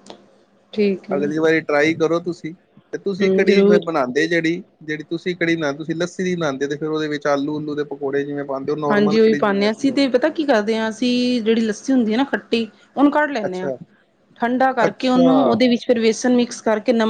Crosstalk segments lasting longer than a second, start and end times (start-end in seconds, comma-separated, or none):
none